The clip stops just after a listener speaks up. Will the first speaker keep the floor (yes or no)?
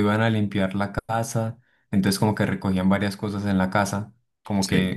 yes